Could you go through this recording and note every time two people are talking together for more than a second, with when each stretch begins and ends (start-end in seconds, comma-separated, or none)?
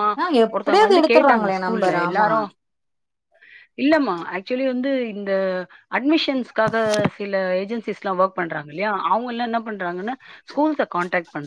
0.5-2.3